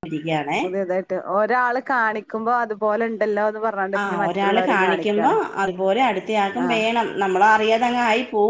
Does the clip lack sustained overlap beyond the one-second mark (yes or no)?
yes